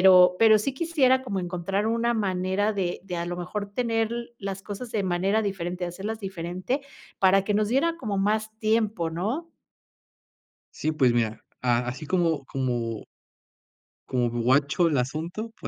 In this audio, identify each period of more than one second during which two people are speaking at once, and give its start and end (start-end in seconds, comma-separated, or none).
none